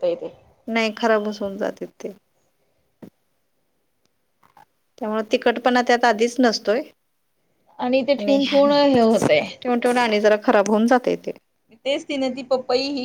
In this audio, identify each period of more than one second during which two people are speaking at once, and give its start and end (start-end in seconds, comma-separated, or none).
none